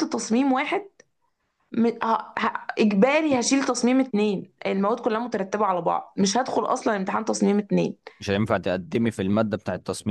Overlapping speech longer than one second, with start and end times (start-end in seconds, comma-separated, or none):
none